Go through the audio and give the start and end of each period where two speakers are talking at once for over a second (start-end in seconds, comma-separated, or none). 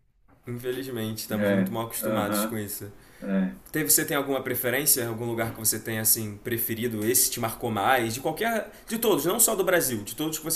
1.3-2.6